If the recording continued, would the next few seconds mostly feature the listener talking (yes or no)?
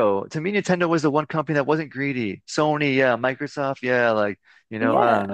yes